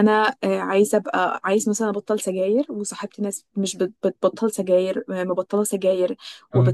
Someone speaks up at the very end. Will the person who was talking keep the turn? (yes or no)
yes